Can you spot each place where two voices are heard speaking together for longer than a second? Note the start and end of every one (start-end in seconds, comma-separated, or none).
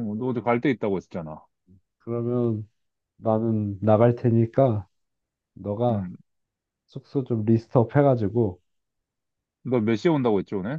none